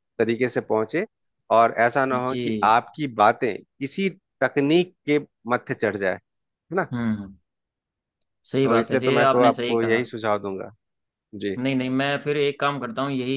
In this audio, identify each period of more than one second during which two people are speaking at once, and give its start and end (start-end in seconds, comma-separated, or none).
8.6-10.0